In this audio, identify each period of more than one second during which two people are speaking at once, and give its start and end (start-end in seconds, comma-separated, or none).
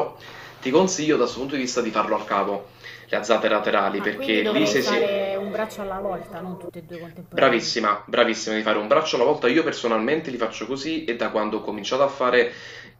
3.9-5.3